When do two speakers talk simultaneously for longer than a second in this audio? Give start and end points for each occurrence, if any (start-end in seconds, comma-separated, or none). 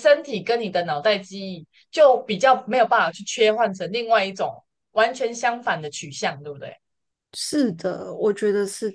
none